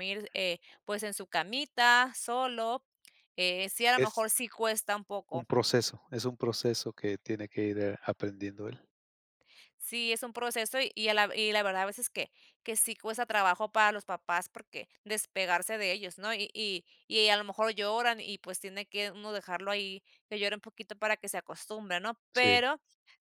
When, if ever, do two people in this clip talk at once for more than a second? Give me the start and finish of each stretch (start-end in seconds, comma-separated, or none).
none